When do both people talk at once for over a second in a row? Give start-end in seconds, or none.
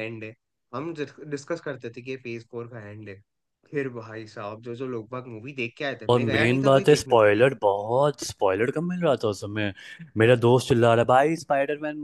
6.1-7.5